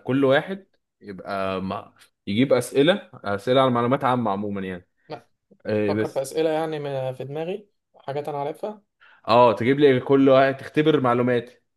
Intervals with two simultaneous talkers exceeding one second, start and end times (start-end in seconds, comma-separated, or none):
none